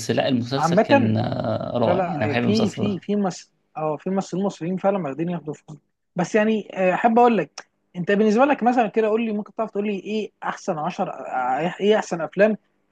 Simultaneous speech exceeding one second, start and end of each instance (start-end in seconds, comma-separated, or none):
1.8-3.0